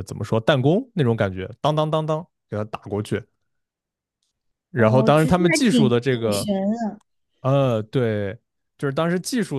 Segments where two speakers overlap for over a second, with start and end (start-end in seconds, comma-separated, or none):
4.7-6.5